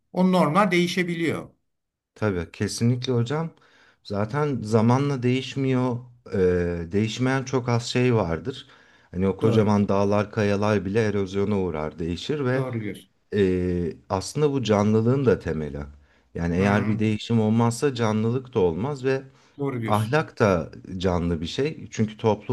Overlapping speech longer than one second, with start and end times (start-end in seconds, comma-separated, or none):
none